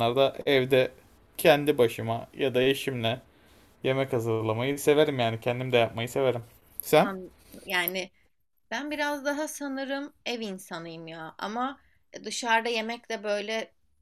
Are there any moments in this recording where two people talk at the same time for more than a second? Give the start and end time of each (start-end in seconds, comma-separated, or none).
none